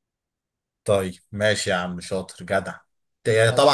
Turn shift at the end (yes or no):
no